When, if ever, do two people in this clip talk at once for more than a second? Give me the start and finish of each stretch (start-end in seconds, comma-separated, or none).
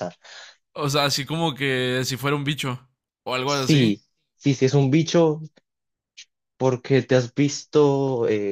none